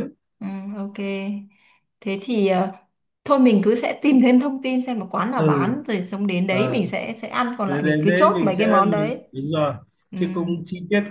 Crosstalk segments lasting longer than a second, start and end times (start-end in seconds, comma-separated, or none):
7.7-9.2